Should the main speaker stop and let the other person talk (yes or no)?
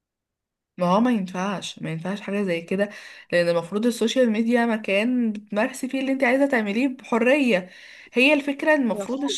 no